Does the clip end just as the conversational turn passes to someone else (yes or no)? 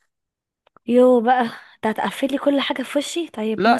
yes